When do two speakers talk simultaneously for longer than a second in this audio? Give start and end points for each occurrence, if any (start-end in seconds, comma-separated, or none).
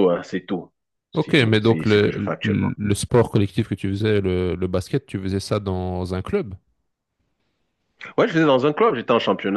1.1-2.7